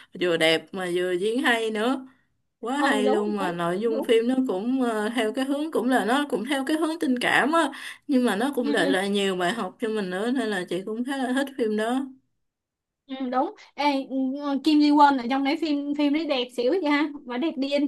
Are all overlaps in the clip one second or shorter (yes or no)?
no